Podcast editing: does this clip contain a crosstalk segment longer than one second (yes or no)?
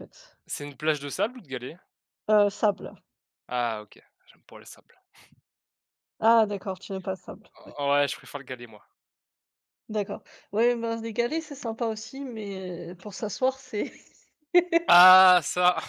no